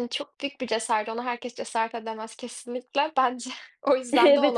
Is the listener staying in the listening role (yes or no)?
no